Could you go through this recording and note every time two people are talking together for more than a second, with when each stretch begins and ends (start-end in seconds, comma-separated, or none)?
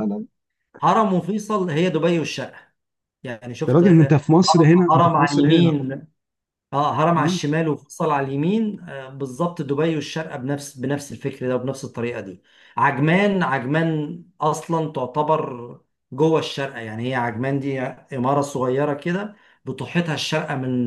3.7-5.8